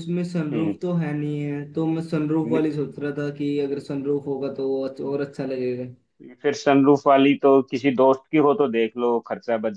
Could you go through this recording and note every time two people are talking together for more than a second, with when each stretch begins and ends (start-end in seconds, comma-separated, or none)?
none